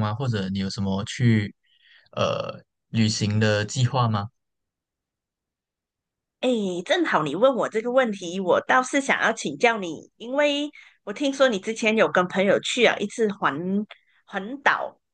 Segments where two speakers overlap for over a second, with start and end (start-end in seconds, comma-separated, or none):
none